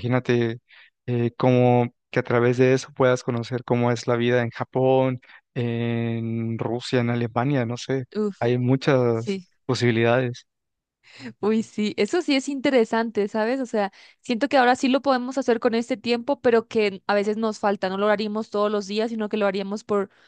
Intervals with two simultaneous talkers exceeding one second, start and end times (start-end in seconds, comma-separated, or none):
none